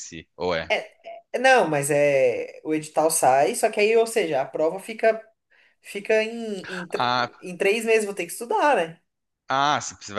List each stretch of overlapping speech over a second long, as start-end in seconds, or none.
none